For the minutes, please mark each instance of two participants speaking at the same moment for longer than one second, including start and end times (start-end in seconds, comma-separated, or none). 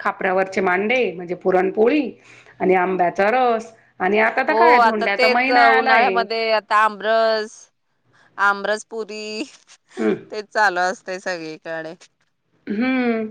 4.5-6.1